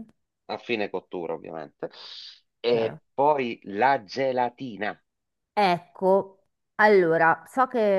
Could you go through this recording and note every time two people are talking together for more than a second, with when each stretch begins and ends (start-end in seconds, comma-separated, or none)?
none